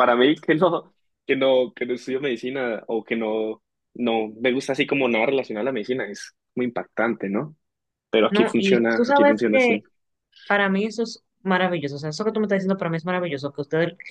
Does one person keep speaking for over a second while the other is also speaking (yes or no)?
yes